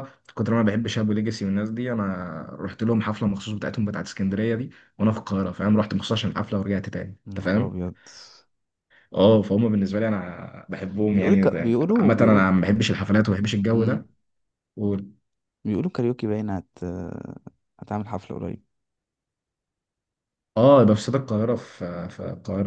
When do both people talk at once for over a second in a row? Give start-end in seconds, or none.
11.1-12.5